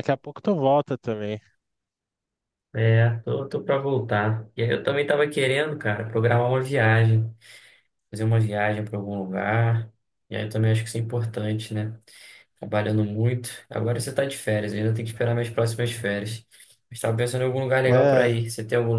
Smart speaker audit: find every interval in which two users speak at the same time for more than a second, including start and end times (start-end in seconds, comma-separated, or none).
none